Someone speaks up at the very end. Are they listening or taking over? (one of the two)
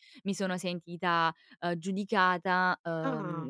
listening